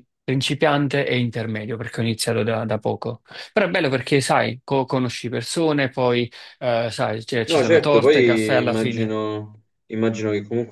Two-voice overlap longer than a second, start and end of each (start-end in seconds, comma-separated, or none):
7.4-9.1